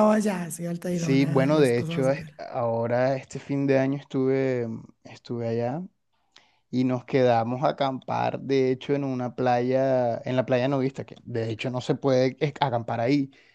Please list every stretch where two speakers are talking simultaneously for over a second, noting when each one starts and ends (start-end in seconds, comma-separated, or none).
0.9-2.3